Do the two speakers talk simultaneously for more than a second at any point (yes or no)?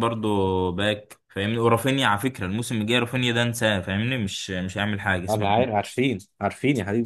no